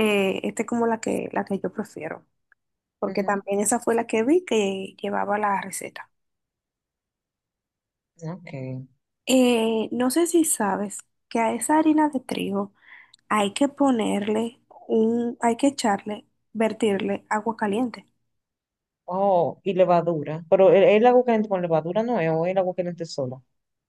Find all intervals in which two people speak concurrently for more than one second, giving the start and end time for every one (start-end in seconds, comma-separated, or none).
none